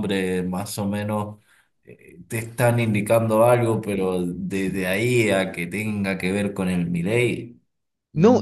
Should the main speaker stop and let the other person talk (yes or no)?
yes